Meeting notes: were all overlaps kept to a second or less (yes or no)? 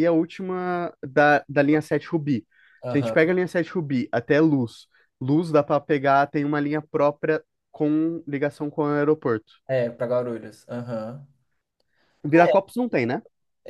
yes